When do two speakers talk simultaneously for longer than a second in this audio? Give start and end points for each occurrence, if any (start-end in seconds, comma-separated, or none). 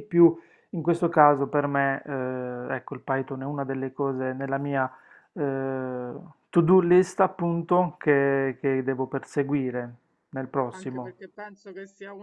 none